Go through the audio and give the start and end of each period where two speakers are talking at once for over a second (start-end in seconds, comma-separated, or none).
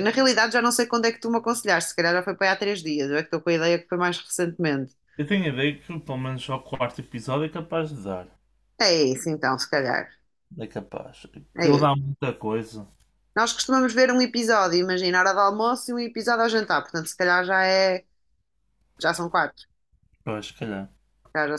none